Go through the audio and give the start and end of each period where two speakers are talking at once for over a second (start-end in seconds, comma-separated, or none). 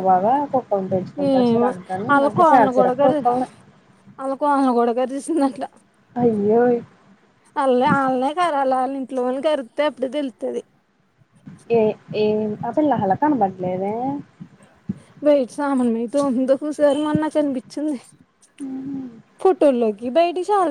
none